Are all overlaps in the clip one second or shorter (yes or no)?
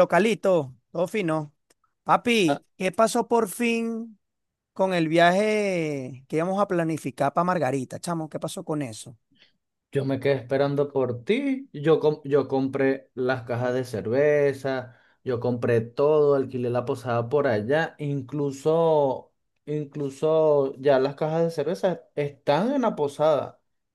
yes